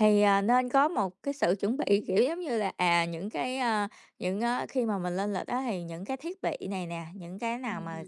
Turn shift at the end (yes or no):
no